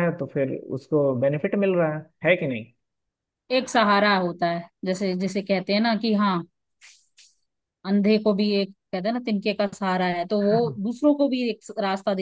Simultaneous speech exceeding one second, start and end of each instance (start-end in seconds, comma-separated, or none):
none